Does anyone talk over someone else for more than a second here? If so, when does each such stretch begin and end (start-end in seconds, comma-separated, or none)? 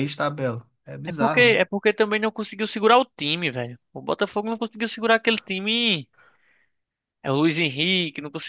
none